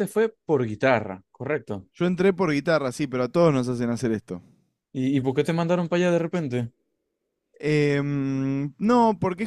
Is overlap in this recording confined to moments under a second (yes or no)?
yes